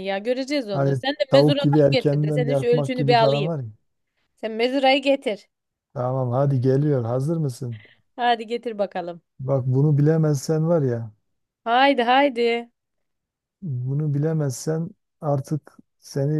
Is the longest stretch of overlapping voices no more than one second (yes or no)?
no